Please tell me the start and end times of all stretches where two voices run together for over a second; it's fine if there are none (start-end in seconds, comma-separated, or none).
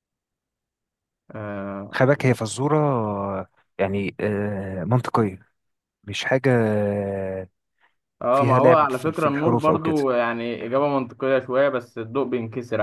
8.3-9.9